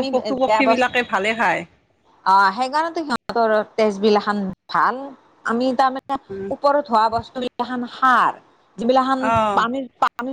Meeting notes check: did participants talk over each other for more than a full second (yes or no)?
no